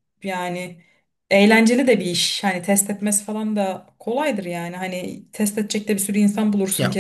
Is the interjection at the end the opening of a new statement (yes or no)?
yes